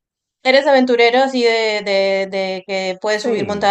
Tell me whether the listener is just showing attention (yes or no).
no